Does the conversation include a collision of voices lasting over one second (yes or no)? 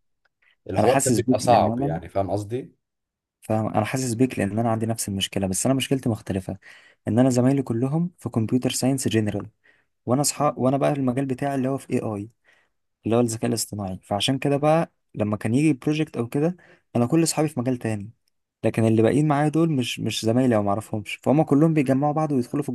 yes